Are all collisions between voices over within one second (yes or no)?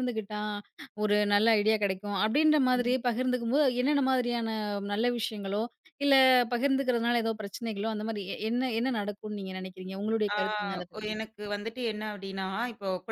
yes